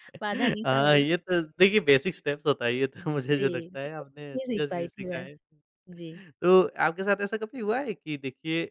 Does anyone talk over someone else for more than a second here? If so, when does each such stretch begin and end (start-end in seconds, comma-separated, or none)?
3.4-5.2